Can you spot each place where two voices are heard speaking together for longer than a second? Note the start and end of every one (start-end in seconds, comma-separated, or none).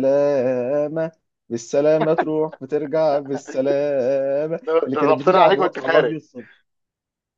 4.7-6.2